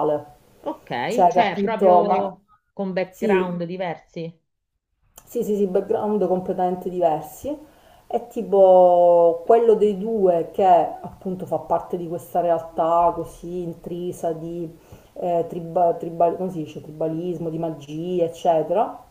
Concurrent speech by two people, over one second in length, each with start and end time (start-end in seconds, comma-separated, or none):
1.1-2.3